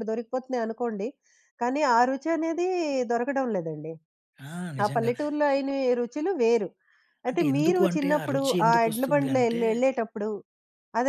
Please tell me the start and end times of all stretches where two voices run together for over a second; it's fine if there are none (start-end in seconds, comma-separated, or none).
7.3-9.6